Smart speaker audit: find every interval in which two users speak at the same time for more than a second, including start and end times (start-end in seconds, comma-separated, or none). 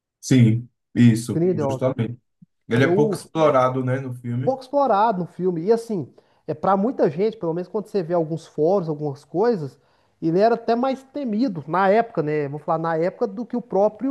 none